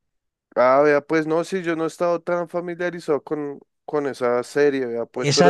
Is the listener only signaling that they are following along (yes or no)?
no